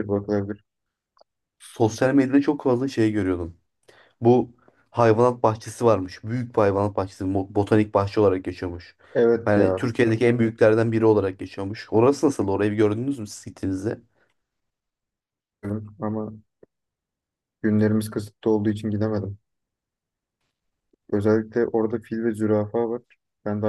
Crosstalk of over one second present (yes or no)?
no